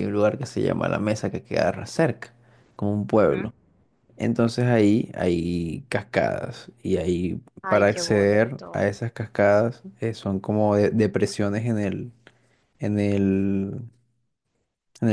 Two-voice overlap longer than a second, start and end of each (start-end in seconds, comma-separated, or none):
7.6-8.9